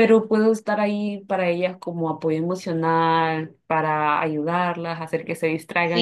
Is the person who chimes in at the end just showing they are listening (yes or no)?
yes